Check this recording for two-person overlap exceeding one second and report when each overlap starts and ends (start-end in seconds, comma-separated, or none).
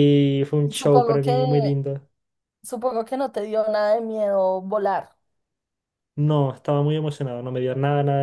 none